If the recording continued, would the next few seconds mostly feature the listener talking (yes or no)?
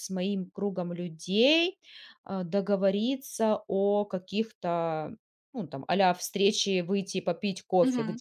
yes